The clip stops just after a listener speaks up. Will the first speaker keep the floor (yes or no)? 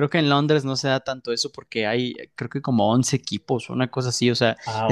yes